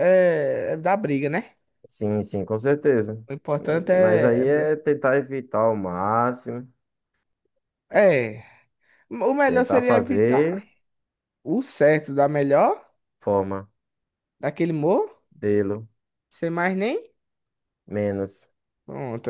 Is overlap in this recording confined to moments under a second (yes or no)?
no